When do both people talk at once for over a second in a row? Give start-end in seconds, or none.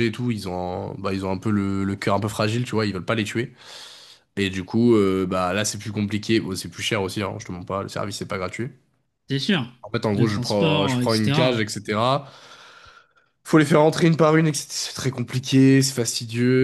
10.1-11.6